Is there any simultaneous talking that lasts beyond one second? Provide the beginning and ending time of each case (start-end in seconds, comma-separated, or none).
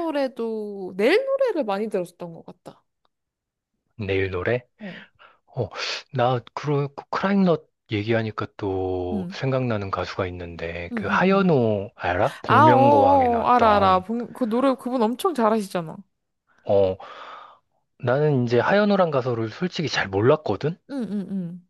12.4-14.1